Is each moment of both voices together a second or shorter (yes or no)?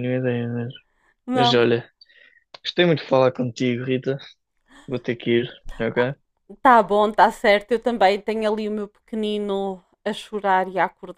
yes